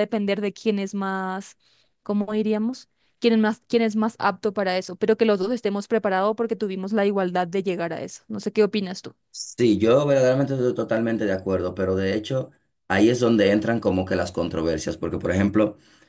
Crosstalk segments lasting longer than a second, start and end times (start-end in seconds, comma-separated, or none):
none